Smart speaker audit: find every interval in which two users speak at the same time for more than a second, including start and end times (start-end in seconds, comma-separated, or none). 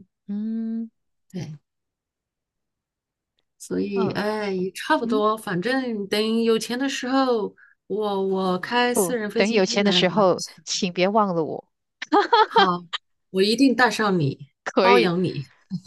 8.9-10.8